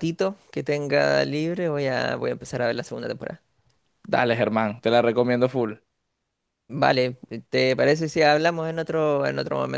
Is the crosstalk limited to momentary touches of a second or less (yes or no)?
yes